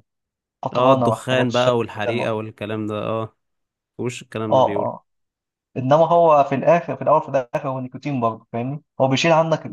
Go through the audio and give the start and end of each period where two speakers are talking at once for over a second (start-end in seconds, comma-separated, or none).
0.7-2.3